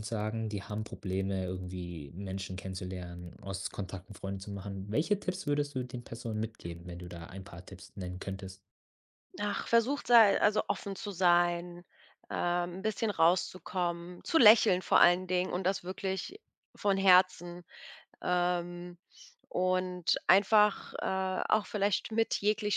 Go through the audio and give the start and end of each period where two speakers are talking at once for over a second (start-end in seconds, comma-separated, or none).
none